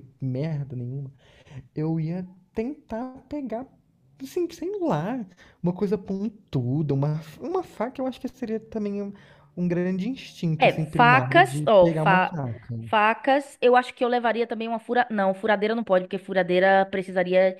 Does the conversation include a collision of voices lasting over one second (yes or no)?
yes